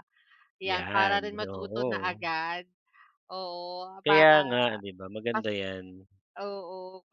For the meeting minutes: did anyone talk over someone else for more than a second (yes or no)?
yes